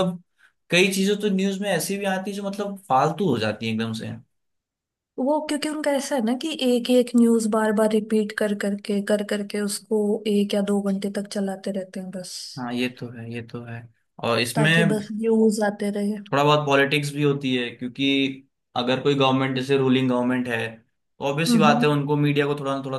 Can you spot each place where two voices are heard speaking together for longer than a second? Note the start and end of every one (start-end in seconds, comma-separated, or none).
none